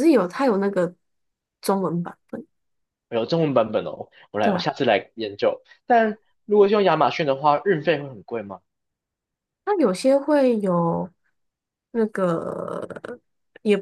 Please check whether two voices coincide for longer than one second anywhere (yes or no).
no